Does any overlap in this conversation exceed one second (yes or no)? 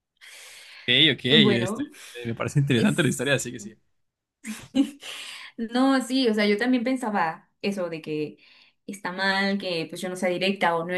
no